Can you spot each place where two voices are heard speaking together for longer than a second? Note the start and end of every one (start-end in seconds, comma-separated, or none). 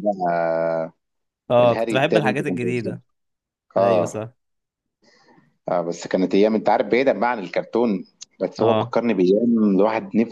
1.6-3.0